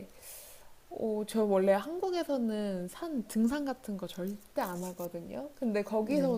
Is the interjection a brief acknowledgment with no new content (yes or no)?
yes